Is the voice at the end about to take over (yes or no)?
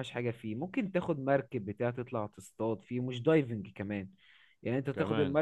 no